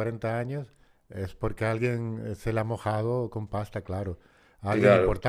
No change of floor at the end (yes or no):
yes